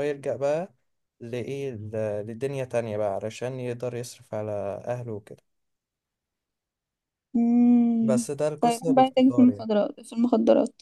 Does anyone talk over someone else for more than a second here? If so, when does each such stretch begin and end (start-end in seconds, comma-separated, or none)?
8.0-9.7